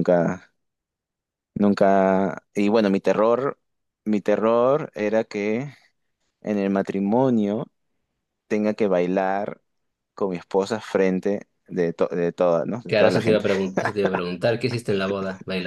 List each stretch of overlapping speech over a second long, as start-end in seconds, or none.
none